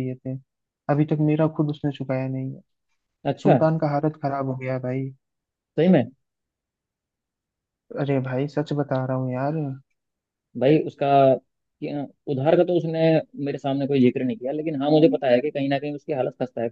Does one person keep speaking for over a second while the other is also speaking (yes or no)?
no